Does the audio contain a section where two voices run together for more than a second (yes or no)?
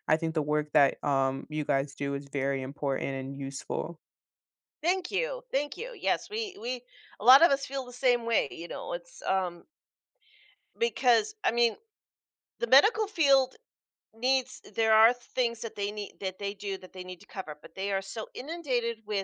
no